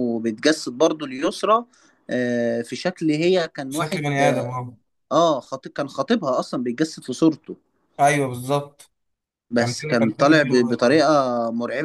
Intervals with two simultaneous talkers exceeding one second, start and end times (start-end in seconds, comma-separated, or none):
9.6-11.0